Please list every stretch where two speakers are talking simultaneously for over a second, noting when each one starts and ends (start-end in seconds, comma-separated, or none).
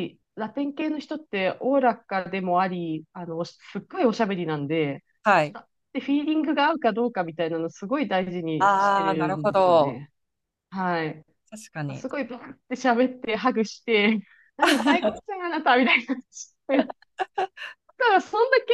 8.6-10.0